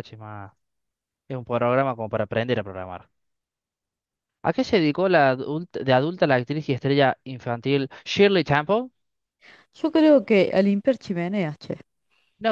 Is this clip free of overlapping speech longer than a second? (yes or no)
yes